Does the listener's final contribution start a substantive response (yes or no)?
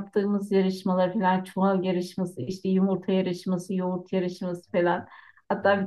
no